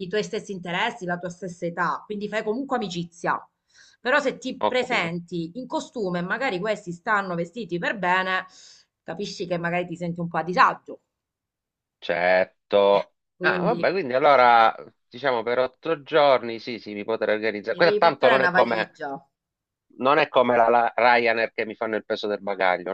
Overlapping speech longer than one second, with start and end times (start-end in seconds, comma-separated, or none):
17.7-19.0